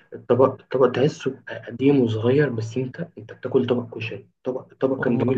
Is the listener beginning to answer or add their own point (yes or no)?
no